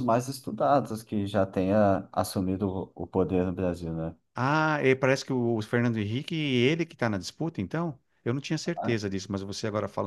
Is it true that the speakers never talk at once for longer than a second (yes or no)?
yes